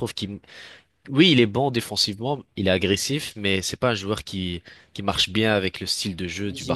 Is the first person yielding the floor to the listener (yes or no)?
yes